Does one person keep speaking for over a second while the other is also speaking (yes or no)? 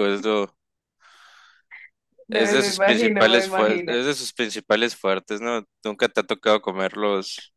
yes